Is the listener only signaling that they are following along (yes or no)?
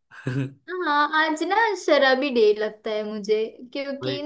yes